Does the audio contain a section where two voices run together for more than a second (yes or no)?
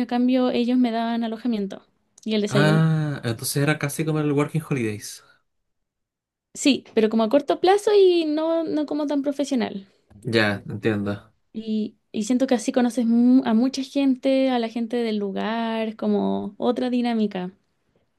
no